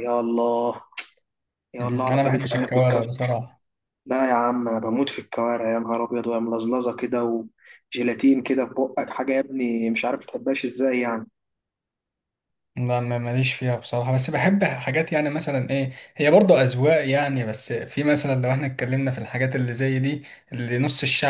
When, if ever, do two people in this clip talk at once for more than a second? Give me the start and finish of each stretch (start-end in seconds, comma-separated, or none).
1.8-3.1